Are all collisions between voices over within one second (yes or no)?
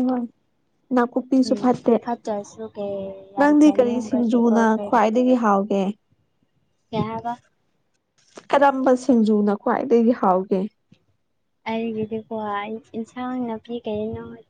no